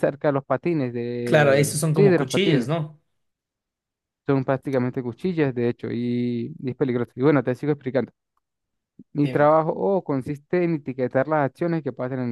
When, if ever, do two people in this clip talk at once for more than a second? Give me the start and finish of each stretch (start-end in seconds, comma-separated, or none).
1.2-2.7